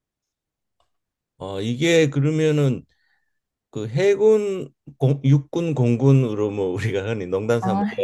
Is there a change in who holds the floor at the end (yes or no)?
no